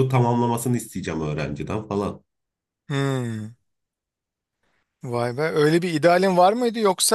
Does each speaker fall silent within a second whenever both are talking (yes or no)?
yes